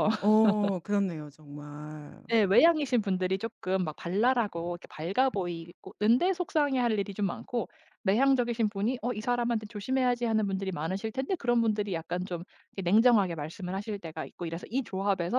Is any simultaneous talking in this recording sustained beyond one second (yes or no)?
no